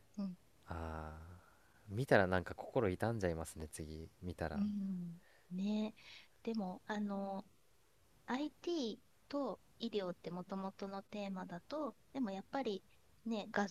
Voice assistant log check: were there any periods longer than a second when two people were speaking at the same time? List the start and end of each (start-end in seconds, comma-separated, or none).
none